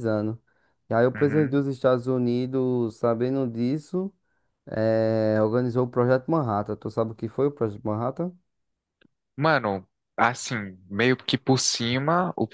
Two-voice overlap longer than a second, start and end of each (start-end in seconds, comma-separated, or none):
none